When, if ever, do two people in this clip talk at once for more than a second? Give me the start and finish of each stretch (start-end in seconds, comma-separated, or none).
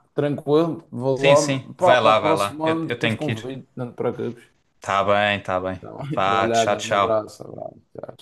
1.1-3.5, 5.8-7.3